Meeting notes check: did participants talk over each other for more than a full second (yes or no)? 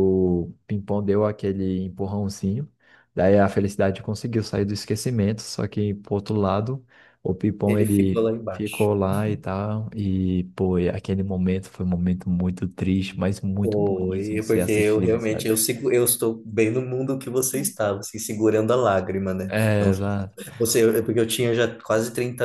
yes